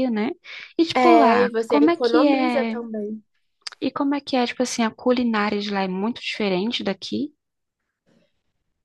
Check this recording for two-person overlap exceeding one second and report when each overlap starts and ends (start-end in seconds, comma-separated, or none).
0.9-2.8